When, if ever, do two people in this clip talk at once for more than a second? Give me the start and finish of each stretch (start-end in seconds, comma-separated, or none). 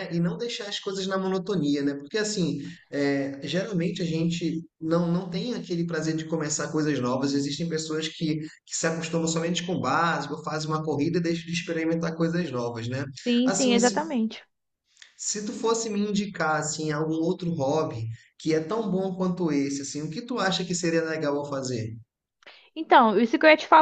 none